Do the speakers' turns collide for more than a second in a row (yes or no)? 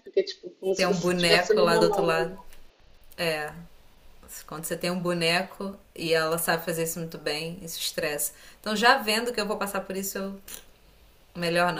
yes